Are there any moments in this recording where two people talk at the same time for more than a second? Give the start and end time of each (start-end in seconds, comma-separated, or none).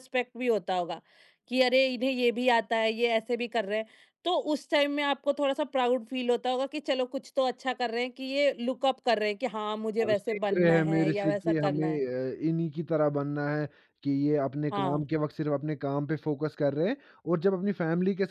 10.1-12.0